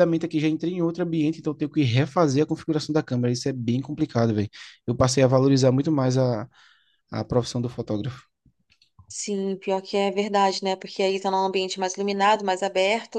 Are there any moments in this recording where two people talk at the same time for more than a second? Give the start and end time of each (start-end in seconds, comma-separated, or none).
none